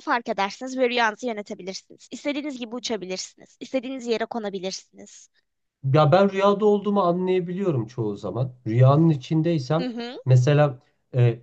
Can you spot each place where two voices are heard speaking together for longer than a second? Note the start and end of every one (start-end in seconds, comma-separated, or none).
none